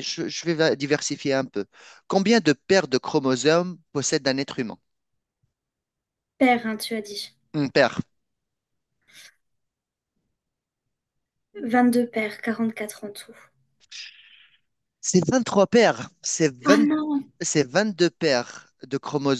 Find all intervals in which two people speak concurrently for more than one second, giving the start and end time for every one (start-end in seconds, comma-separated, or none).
none